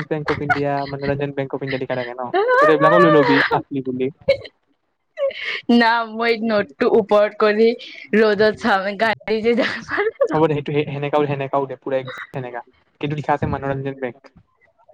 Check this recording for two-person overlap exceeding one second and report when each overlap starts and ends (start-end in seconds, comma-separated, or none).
none